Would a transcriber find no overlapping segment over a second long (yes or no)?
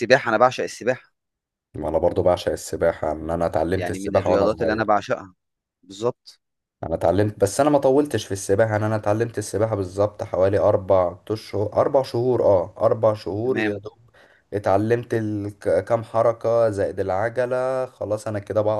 no